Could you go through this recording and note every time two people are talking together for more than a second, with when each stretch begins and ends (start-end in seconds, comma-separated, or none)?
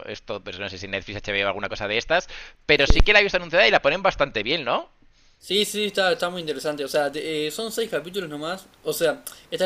none